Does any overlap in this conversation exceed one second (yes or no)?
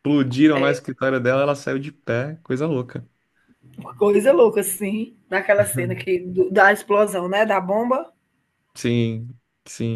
no